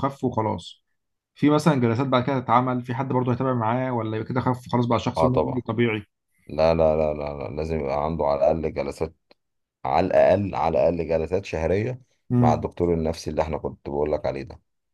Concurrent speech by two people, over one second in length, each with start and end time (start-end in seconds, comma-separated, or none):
none